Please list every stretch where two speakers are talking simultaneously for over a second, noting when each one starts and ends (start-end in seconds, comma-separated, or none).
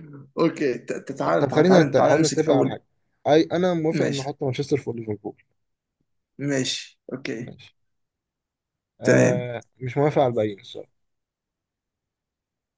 1.4-2.8